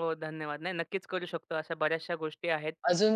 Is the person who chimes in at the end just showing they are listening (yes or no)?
no